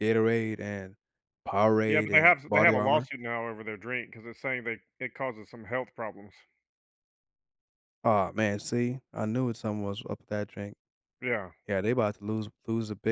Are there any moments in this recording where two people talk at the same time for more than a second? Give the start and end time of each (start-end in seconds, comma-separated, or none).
1.9-3.1